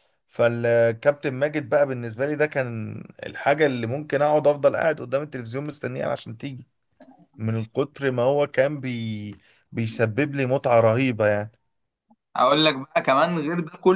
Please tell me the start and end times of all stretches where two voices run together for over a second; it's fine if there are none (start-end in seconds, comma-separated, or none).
none